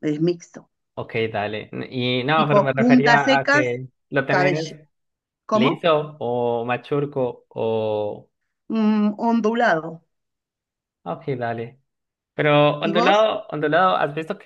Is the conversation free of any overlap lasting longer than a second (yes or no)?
no